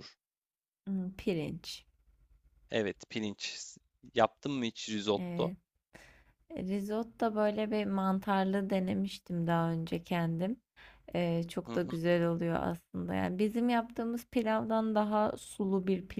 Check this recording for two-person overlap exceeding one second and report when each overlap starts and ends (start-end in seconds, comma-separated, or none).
none